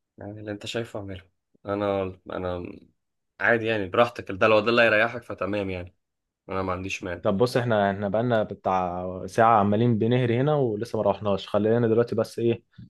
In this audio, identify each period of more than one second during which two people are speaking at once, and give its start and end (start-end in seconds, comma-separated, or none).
none